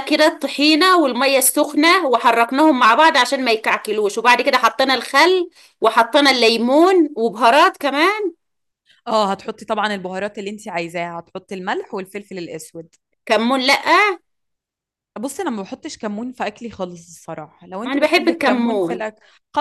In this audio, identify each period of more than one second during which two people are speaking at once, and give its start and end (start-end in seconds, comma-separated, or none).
17.8-19.0